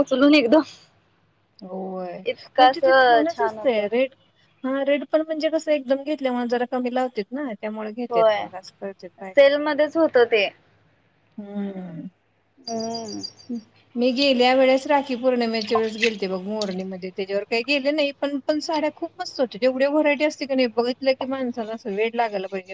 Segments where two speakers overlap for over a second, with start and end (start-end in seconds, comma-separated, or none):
2.2-3.9